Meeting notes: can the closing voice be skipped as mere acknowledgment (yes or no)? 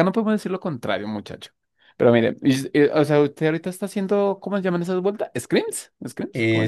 no